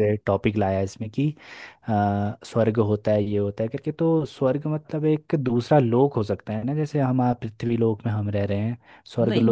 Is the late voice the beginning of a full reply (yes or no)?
no